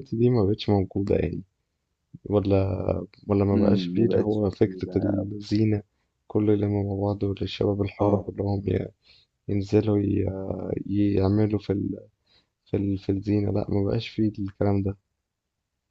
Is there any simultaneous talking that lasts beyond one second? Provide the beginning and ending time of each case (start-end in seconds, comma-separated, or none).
3.5-5.2